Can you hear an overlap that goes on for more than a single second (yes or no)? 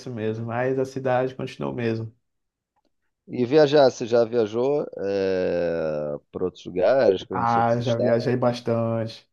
yes